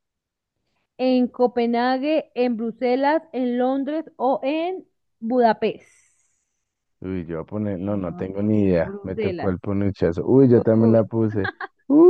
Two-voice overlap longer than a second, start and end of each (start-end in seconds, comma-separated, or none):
7.7-9.6